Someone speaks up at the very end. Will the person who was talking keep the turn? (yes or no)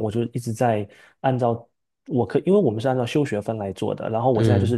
yes